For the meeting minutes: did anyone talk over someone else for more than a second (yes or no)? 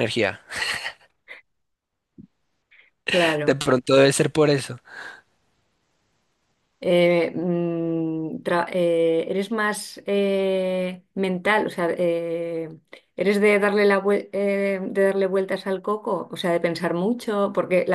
no